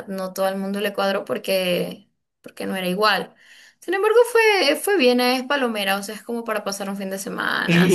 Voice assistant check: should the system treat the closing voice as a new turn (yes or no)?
yes